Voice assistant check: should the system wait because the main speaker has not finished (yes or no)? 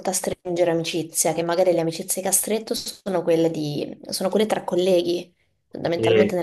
yes